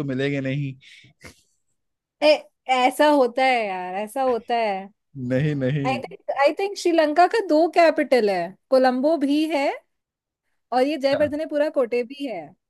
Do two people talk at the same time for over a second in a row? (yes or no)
no